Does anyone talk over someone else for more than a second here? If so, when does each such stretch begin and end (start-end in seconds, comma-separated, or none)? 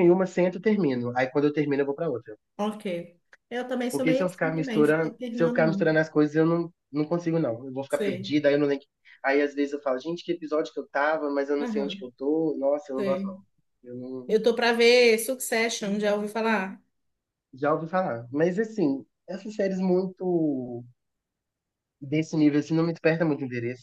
3.9-5.9